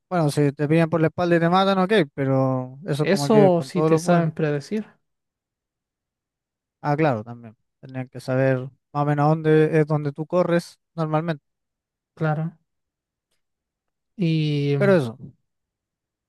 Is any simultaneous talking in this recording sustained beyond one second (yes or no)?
yes